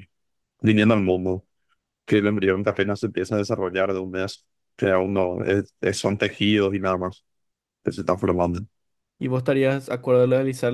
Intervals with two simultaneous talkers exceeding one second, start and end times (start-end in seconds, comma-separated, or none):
none